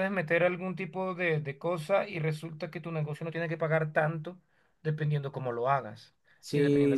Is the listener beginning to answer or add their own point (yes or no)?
no